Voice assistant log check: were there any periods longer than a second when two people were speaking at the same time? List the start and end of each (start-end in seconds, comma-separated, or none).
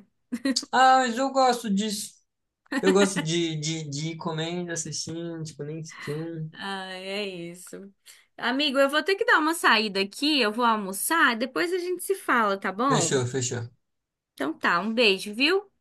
none